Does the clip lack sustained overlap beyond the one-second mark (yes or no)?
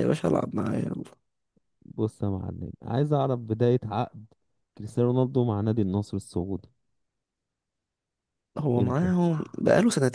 yes